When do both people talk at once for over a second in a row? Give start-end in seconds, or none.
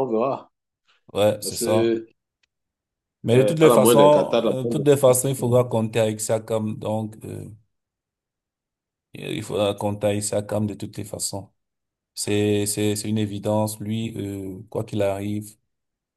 3.3-4.8